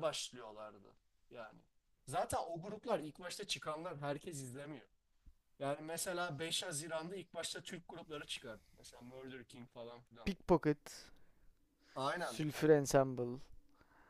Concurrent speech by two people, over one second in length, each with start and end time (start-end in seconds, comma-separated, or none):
none